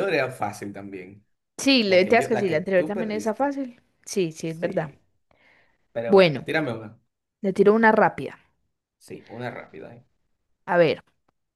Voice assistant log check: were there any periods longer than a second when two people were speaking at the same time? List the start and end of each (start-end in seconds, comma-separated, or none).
1.9-3.5